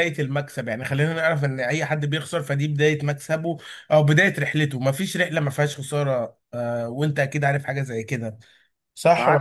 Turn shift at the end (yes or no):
yes